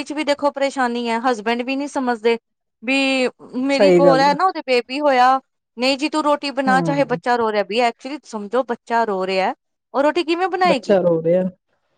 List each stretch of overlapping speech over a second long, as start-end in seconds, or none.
none